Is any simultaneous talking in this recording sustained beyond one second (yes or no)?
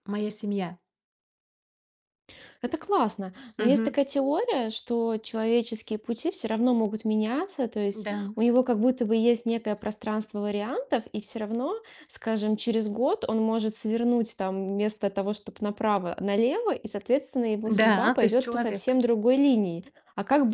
yes